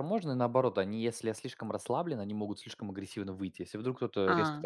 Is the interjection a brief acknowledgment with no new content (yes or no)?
yes